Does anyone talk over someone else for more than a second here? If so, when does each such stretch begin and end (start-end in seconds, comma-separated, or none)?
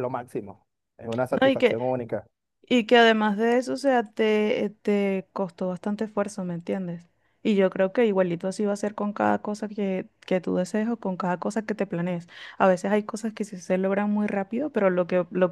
none